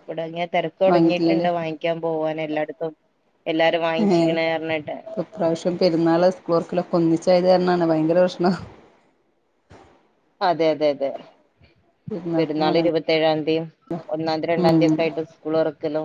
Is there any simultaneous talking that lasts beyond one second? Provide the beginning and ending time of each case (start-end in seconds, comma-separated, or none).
none